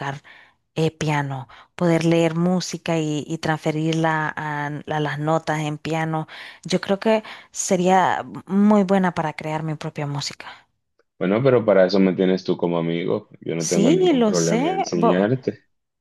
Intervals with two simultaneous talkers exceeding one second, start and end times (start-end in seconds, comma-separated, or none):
13.6-14.8